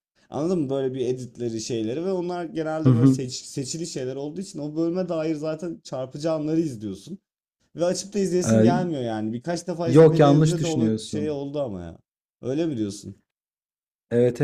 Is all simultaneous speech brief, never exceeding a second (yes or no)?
no